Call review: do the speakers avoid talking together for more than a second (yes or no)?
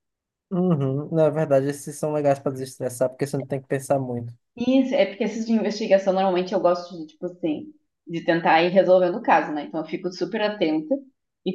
yes